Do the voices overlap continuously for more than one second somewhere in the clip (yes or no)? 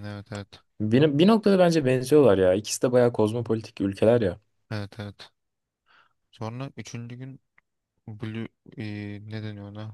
no